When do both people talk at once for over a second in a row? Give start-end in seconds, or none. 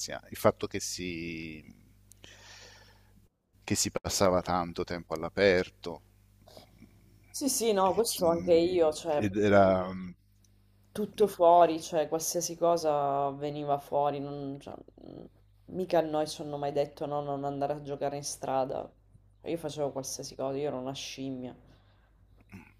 7.8-9.2